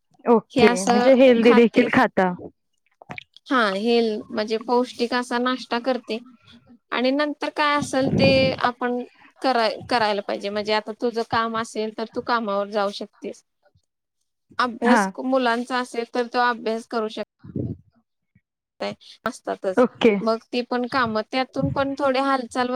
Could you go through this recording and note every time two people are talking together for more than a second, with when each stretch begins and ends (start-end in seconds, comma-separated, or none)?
0.6-1.9